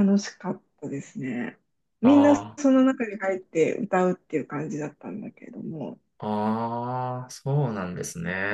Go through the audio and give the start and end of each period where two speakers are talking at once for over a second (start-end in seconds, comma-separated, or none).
none